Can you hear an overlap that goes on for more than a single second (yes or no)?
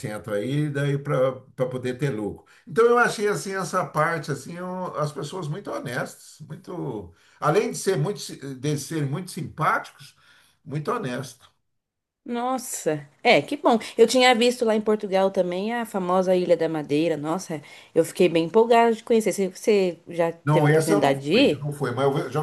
yes